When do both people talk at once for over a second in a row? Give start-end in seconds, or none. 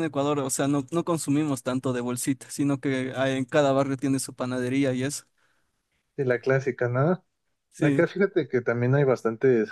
none